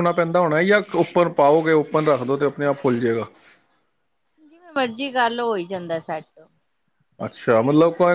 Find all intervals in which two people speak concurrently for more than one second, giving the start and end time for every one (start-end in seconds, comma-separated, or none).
none